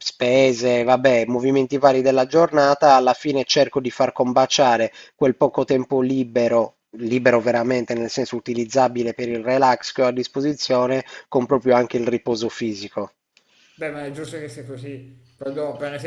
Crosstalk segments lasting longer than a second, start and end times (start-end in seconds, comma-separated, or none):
none